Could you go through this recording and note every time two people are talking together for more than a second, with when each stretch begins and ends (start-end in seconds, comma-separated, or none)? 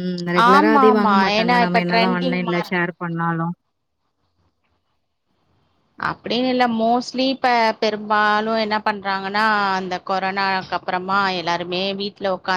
0.5-2.7